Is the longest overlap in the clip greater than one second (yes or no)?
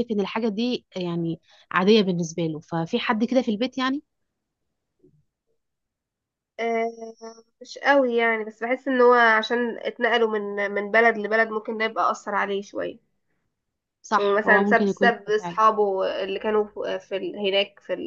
yes